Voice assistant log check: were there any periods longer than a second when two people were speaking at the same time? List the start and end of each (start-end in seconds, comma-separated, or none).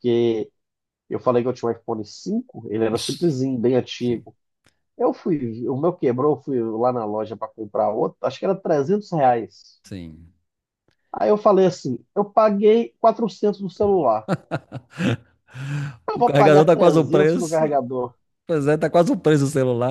16.1-17.8